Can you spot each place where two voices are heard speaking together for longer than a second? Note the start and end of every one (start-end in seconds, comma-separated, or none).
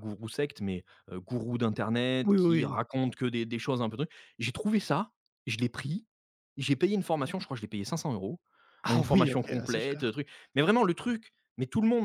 8.9-10.2